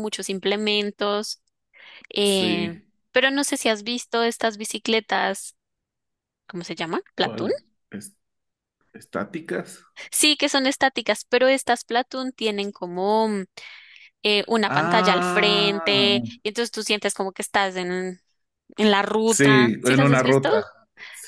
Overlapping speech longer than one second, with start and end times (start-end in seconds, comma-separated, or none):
14.7-16.1, 19.3-20.5